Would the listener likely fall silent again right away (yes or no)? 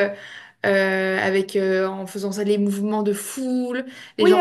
no